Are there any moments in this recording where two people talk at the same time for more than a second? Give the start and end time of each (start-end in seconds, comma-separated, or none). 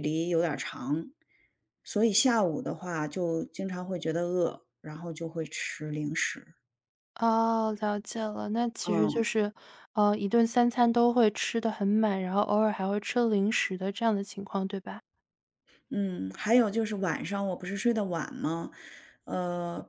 none